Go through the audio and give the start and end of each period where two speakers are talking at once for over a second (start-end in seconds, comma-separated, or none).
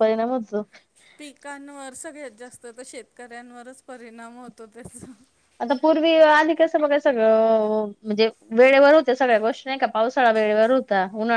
none